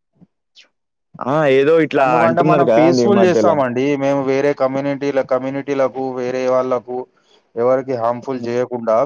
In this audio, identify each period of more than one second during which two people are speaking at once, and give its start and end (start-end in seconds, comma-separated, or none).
none